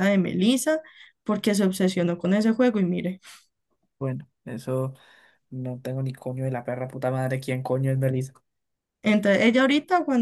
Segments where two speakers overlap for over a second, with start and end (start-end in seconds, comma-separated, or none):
none